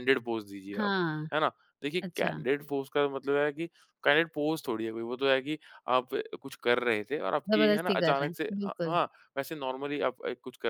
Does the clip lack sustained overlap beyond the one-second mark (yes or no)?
no